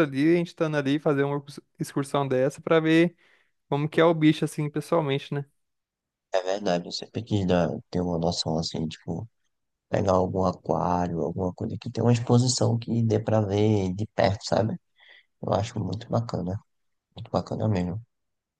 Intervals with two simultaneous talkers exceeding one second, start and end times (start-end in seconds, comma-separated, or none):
none